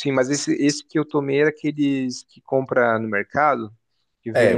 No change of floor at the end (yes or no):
no